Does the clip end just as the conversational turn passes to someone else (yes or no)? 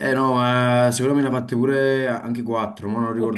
yes